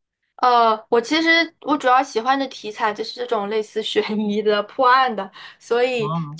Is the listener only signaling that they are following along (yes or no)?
yes